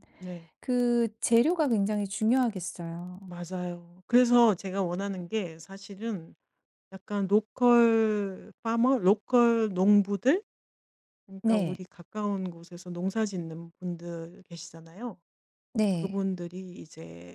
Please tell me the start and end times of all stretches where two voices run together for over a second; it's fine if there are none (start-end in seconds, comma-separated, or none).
none